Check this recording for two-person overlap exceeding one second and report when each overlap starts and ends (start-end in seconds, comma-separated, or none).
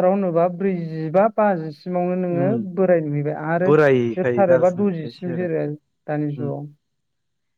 3.6-5.5